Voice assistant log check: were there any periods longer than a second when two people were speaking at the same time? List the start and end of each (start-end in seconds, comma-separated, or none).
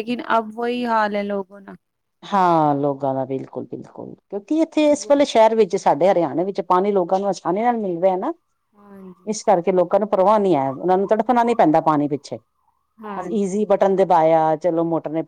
none